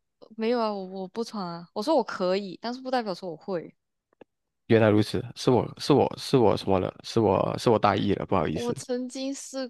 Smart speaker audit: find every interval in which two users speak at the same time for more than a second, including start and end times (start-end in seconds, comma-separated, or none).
none